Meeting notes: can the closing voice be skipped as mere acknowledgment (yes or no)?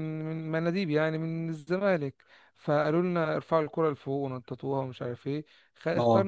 yes